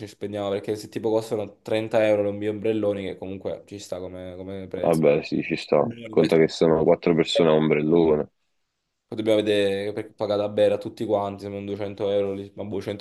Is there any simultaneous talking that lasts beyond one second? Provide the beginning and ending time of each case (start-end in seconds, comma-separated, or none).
none